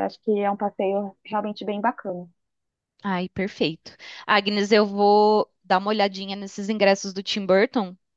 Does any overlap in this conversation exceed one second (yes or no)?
no